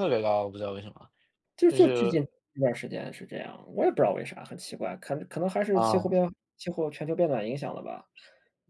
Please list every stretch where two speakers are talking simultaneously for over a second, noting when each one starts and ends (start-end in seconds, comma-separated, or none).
none